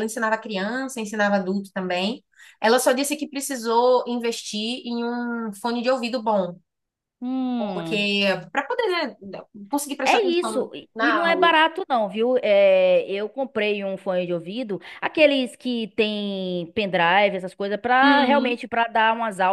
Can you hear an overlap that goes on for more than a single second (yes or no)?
yes